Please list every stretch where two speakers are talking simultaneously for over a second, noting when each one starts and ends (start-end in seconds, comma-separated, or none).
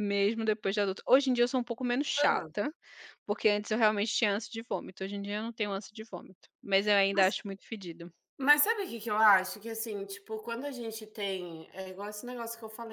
none